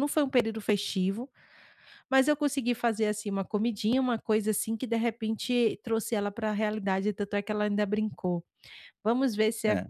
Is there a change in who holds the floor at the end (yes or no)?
no